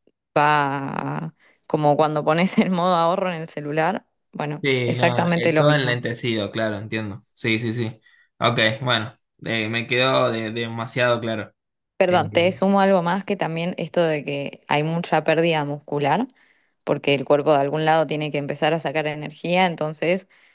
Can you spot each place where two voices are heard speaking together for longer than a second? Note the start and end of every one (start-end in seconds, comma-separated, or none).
4.6-6.0